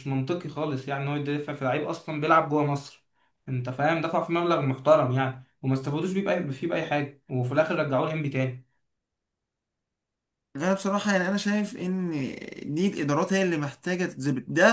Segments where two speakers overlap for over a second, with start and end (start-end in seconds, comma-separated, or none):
none